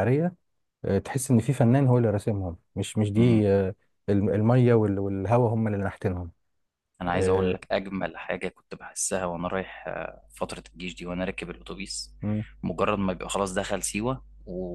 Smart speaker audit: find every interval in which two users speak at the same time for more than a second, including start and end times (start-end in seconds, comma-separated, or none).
none